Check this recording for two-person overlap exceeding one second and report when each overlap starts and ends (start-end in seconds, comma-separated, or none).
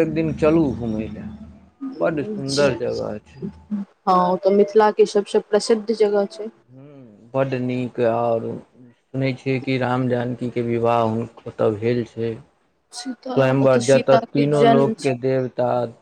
13.3-15.1